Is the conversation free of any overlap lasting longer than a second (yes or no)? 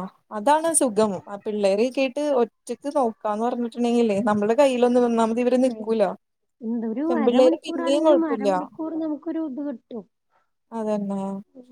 no